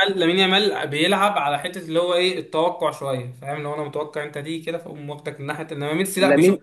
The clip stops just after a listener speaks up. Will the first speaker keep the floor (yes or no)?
yes